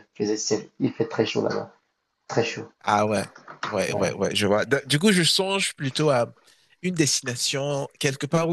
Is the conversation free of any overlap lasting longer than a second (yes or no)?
yes